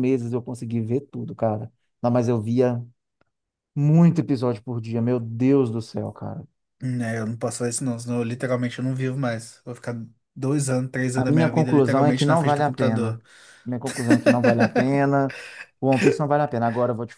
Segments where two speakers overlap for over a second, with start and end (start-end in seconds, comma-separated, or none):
11.1-13.2